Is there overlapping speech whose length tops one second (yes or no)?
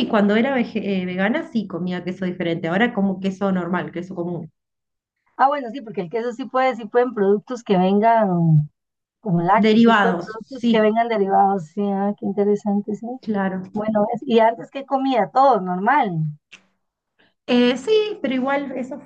yes